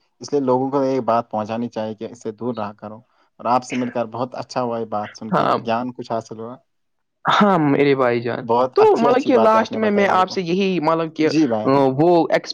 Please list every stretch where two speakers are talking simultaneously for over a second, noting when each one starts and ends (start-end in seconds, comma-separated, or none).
8.5-10.4